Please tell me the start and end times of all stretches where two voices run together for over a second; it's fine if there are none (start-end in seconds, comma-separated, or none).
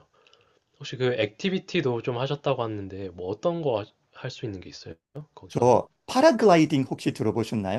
none